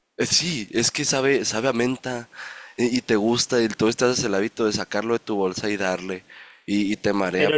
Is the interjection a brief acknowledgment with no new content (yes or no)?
no